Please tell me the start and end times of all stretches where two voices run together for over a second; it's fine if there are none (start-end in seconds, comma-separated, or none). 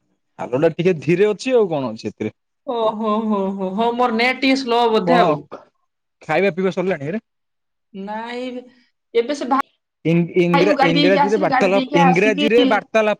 10.9-12.5